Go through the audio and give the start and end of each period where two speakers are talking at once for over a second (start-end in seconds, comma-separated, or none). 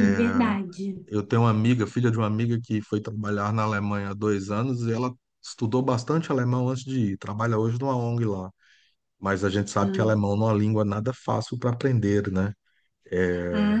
none